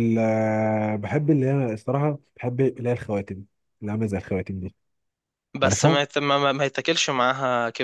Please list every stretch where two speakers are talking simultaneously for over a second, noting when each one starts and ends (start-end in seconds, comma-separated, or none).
none